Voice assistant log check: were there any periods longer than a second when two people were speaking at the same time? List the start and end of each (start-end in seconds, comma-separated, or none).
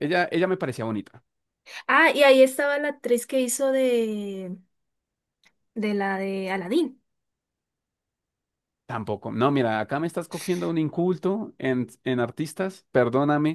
none